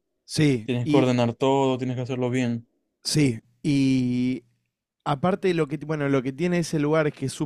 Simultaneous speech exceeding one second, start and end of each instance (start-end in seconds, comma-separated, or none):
none